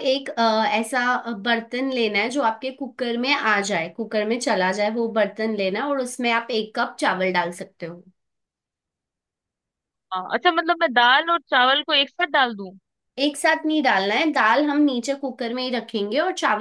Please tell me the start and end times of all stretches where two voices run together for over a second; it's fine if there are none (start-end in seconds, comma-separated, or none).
none